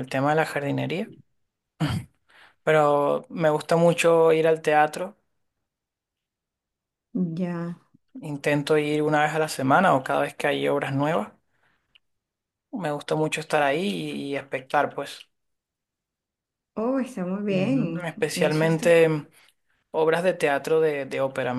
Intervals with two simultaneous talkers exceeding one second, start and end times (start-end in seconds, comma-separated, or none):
17.5-19.0